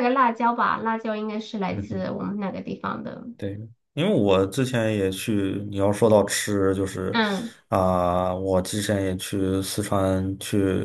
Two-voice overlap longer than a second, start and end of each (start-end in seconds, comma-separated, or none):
none